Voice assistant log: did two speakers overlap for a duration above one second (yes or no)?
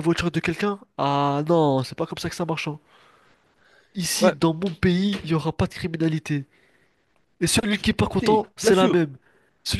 yes